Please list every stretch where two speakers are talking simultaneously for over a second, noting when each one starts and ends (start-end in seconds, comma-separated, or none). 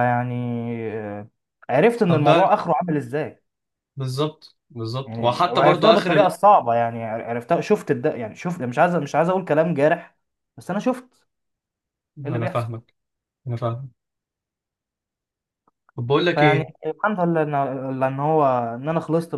5.1-6.4